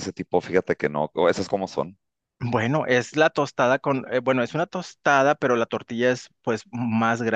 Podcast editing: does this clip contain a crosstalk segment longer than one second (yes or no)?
no